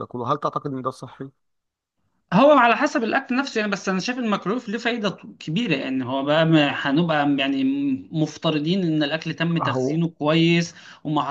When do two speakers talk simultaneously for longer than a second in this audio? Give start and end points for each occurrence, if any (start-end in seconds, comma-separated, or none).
none